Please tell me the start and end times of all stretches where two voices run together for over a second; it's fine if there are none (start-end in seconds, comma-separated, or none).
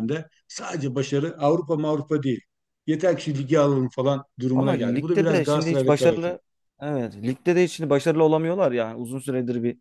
4.5-6.3